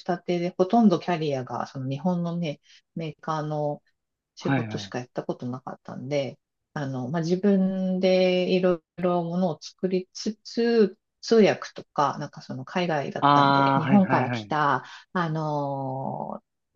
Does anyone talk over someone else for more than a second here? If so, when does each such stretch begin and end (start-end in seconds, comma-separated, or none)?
13.2-14.5